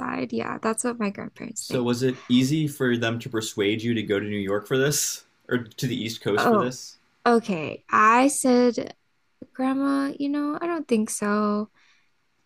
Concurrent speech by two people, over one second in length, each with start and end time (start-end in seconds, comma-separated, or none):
none